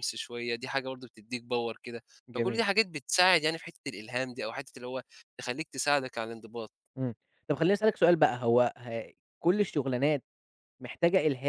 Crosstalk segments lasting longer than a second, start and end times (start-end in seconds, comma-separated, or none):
none